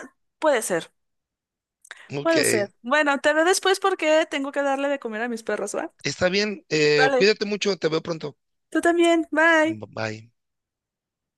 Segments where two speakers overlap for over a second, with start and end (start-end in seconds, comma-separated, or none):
none